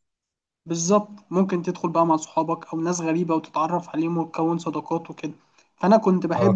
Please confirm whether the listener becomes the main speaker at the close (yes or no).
no